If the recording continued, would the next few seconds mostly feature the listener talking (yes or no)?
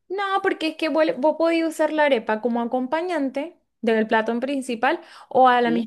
no